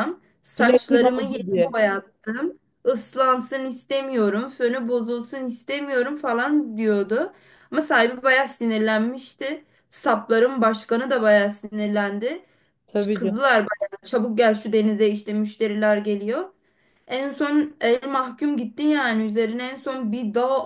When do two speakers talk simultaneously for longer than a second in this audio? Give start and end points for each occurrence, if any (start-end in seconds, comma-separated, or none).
0.6-1.8